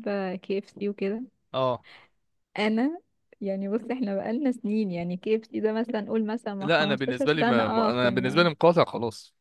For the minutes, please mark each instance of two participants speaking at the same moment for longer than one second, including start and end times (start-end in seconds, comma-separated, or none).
6.6-8.5